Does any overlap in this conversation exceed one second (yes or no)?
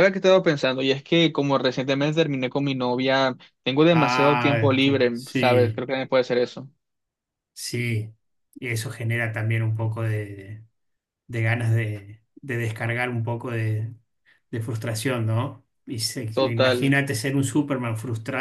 yes